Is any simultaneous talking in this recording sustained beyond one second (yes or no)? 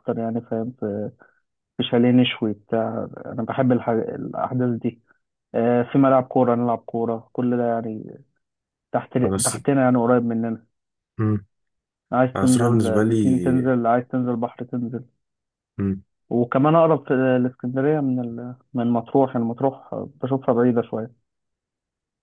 yes